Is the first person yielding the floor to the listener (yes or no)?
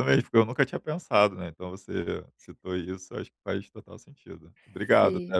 no